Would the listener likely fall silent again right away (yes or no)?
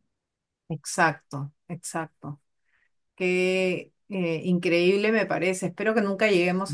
yes